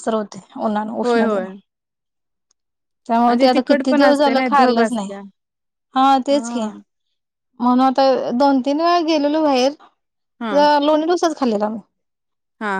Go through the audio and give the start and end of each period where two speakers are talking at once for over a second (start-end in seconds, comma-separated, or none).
3.3-5.1